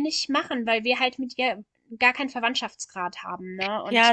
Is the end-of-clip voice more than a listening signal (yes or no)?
yes